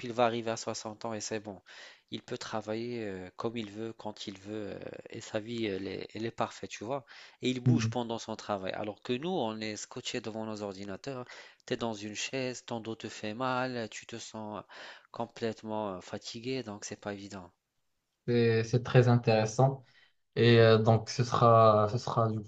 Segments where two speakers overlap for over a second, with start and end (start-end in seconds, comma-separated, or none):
none